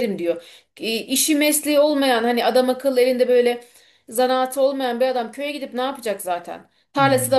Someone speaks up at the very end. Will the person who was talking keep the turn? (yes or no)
yes